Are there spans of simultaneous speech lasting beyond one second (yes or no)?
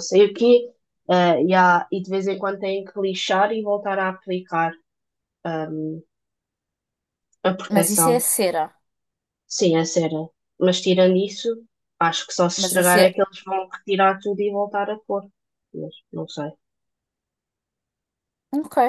no